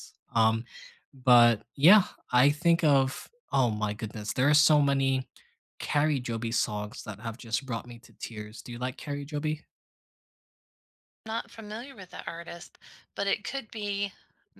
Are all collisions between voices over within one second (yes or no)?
yes